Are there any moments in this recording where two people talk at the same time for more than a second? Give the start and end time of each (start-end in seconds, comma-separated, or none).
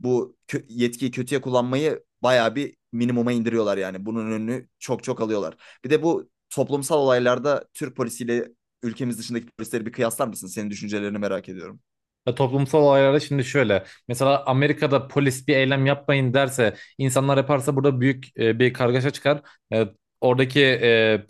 none